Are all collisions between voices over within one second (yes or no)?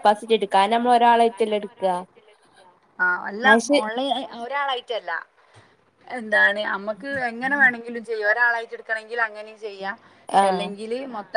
yes